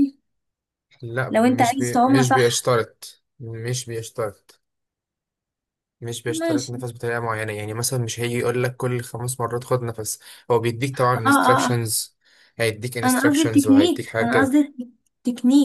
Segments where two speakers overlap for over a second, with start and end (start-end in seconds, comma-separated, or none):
1.3-2.7, 13.0-14.6